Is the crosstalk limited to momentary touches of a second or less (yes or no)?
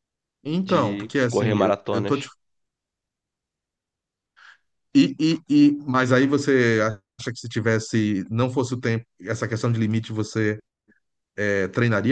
no